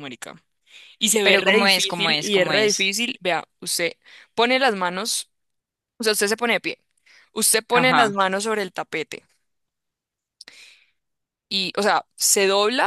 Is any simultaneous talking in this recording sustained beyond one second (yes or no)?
yes